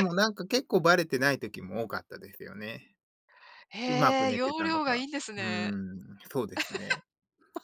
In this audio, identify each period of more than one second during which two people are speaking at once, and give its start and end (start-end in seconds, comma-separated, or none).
3.9-5.7